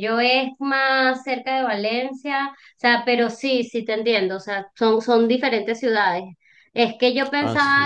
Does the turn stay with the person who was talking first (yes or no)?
yes